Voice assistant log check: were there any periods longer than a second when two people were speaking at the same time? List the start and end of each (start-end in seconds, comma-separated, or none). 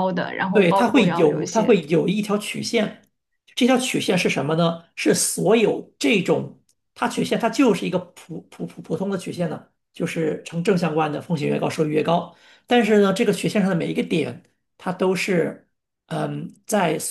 0.5-1.8